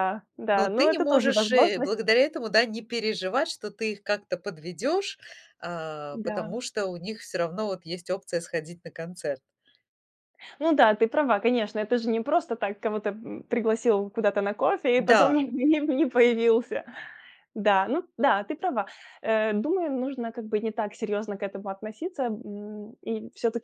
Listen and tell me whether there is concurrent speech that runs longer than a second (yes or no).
yes